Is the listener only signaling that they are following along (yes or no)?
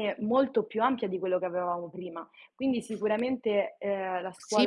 no